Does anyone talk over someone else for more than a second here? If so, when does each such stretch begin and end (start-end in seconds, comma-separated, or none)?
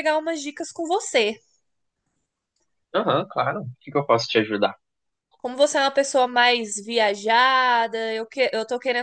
none